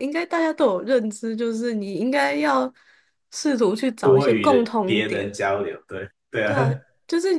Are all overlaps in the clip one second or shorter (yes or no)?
no